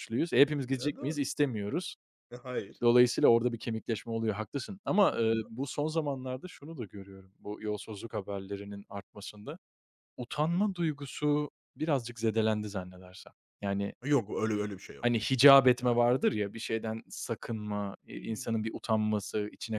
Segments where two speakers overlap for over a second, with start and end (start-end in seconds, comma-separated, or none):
none